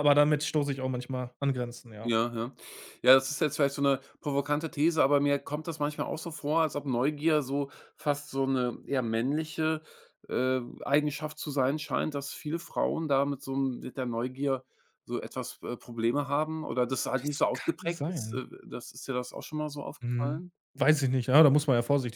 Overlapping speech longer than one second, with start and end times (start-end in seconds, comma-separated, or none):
17.1-18.4